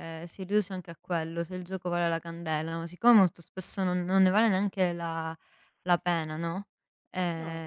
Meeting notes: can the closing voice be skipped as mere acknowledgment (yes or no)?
yes